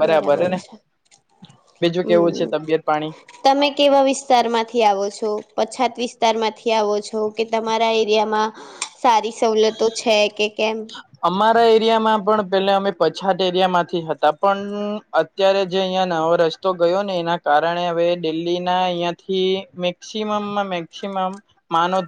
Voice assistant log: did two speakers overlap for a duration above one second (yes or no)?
no